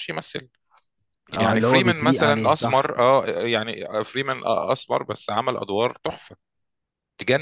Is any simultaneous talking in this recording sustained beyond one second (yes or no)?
yes